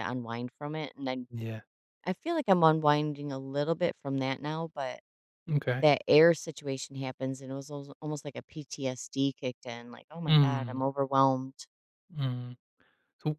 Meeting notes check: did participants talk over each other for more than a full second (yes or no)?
no